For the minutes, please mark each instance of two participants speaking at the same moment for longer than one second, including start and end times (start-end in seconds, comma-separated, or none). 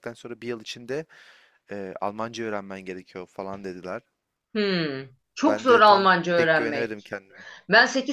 5.5-7.1